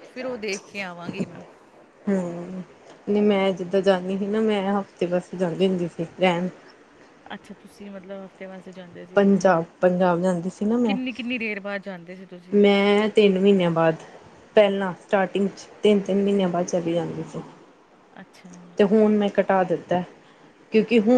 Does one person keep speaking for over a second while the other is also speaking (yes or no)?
no